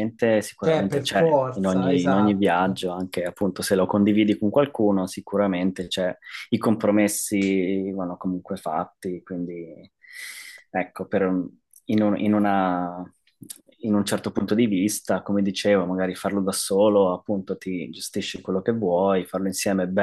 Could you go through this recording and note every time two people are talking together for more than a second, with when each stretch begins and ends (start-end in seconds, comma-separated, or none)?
0.6-2.8